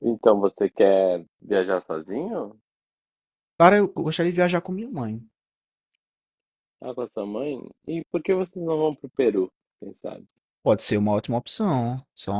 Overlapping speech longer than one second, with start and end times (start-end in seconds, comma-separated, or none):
none